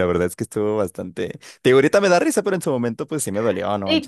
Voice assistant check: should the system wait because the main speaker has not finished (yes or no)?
no